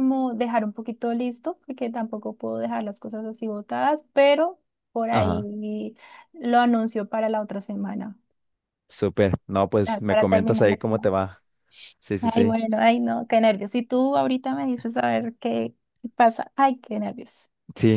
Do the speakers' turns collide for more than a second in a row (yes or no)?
yes